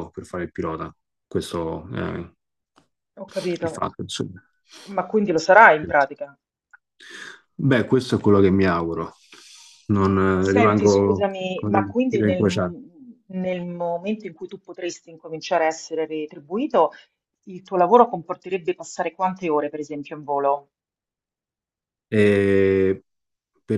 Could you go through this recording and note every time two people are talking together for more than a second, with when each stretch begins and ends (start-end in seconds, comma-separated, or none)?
10.4-12.4